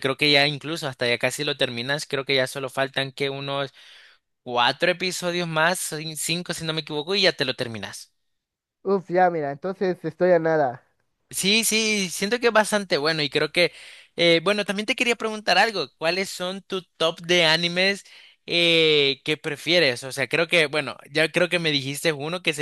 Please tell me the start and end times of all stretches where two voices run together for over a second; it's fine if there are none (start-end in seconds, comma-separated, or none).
none